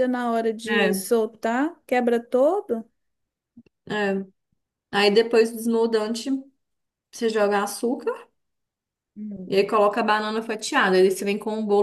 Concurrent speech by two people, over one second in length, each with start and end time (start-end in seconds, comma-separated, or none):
none